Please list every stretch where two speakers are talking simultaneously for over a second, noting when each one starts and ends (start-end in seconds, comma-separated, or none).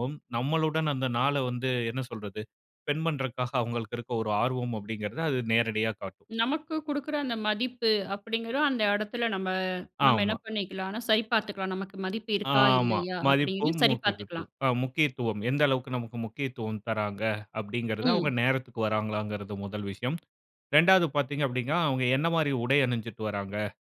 12.5-14.5